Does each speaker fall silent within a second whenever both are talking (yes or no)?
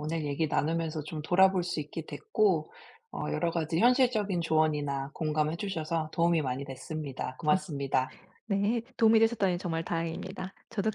yes